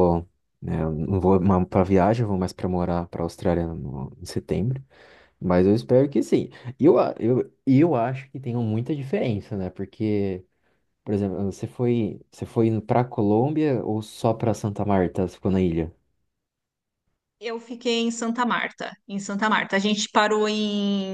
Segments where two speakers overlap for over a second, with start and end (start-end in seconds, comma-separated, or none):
none